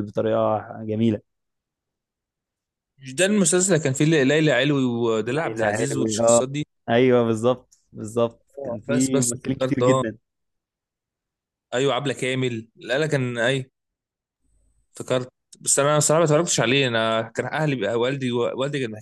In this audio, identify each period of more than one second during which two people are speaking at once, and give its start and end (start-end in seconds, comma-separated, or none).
5.3-6.5, 8.6-10.0